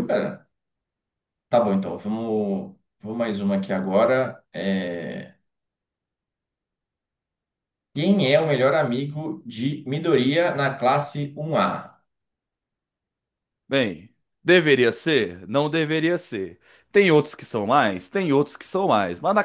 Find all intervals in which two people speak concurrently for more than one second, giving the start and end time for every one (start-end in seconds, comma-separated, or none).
none